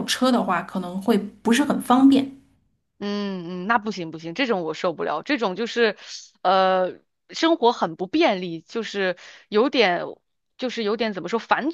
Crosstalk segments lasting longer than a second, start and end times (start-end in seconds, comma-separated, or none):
none